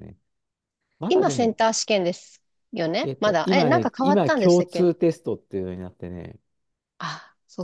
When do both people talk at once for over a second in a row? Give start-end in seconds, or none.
3.0-4.9